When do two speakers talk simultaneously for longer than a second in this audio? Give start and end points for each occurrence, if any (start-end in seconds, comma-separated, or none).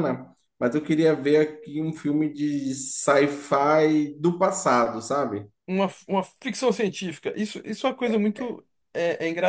none